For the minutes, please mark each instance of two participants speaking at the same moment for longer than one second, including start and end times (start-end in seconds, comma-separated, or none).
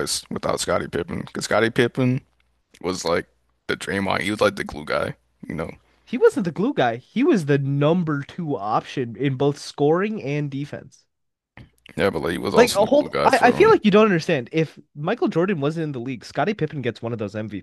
12.6-13.8